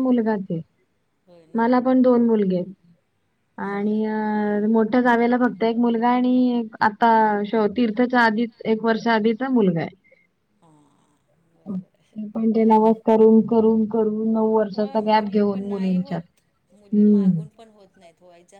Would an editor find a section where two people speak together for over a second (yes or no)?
yes